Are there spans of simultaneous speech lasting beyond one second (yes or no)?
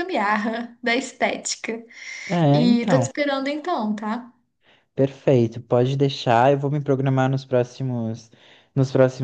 no